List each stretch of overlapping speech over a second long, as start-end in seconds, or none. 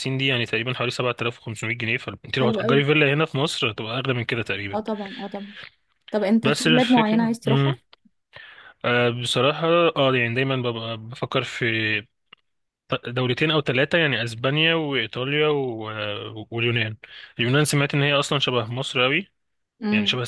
6.4-7.8